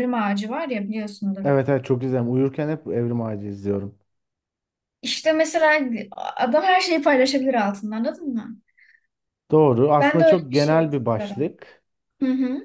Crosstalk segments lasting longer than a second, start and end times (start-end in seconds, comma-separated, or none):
10.0-11.5